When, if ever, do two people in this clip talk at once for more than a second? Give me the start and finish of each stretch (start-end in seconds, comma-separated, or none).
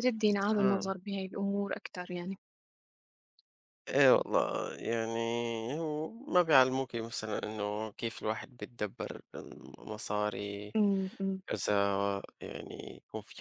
none